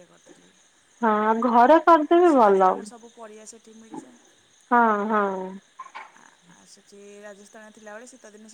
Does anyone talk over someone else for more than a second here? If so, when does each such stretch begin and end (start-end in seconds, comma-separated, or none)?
none